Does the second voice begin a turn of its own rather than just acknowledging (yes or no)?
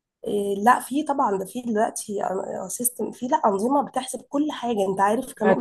yes